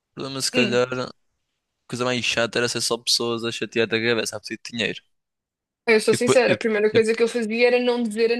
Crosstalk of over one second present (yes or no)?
no